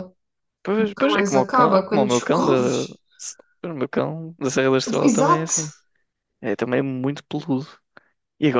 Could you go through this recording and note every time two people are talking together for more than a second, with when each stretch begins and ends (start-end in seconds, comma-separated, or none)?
0.8-2.5